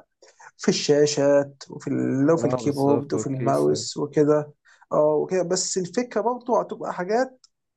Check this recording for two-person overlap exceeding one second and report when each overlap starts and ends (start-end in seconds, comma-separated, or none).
2.4-3.9